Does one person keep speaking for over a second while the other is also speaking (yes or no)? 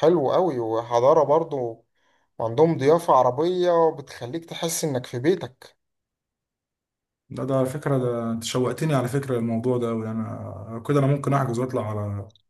no